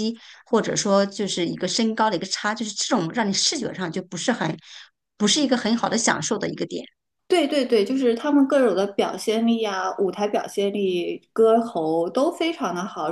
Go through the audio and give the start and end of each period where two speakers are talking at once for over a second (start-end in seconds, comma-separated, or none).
none